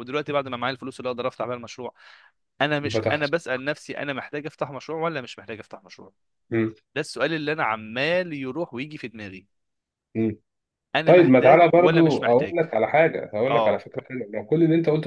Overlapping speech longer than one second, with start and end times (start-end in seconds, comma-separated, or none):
11.1-12.6